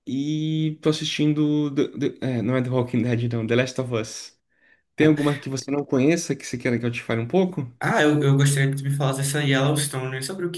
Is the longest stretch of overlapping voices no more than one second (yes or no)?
yes